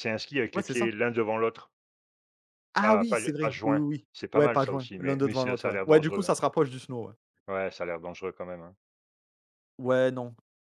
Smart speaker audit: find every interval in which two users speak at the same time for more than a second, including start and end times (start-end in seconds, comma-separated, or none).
2.8-6.3